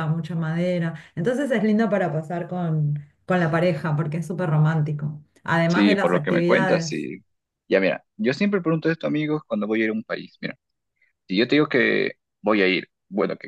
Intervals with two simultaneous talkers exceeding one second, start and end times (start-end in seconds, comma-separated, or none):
5.7-7.0